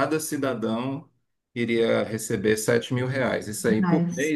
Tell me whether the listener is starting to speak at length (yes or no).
no